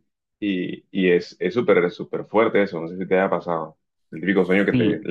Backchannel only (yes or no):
no